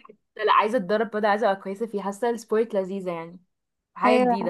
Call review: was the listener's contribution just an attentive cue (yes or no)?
no